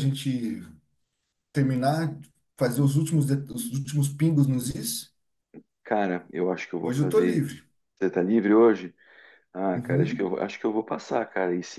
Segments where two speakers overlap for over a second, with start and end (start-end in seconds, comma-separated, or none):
none